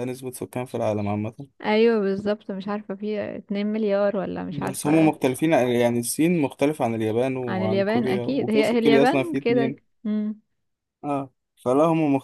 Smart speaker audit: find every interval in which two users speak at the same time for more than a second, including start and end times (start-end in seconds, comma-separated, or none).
7.5-9.8